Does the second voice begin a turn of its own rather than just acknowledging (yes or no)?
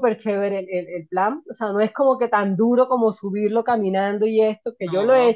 no